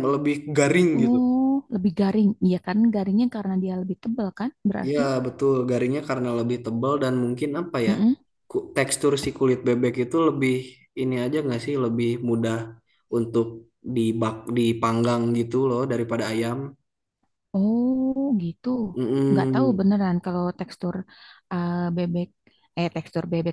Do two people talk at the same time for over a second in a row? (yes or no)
no